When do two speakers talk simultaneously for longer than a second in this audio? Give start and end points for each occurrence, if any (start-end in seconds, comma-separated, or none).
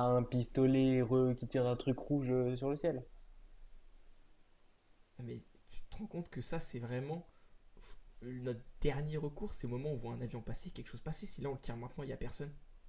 none